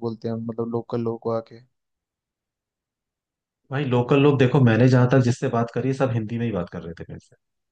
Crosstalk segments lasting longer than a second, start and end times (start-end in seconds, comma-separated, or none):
none